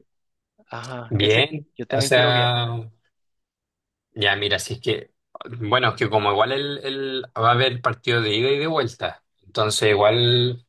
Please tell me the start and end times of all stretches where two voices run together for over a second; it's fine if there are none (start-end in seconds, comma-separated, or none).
1.1-2.6